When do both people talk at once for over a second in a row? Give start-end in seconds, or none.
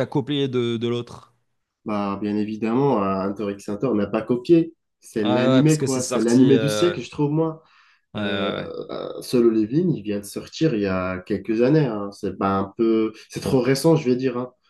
5.2-7.0